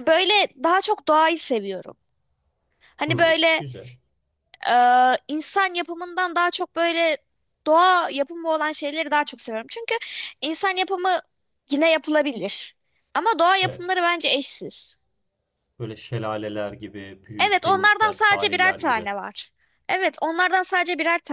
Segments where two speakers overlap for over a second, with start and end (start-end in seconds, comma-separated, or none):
17.4-19.1